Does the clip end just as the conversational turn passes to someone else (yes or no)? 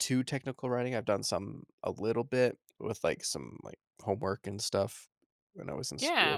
yes